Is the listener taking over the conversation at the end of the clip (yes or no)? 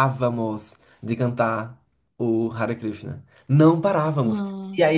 no